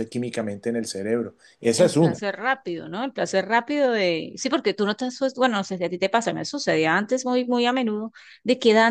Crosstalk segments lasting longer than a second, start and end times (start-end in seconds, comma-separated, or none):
none